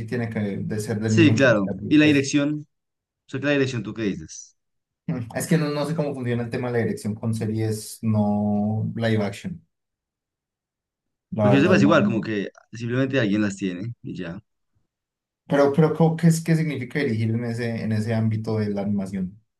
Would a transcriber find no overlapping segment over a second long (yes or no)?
no